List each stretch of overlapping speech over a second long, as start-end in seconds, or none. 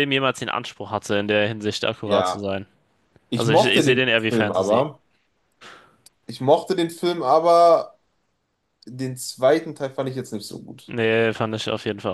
3.4-4.8